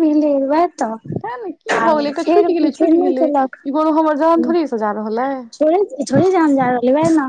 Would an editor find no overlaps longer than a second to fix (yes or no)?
no